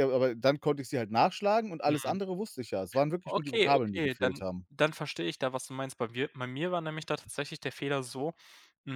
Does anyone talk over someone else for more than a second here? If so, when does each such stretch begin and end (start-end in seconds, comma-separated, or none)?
3.2-4.7